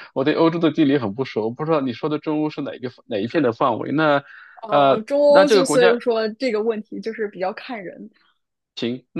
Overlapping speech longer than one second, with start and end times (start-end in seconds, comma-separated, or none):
4.7-6.0